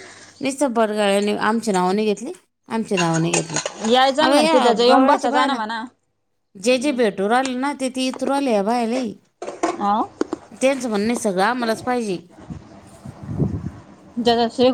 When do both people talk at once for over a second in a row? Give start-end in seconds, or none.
4.2-5.6